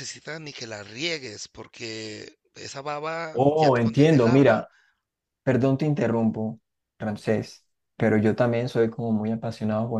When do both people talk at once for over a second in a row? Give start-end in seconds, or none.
3.3-4.6